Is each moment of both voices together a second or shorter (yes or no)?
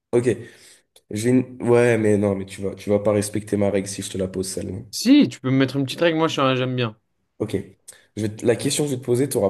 yes